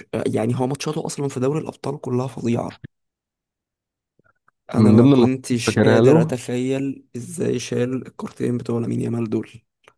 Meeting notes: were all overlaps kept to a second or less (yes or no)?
no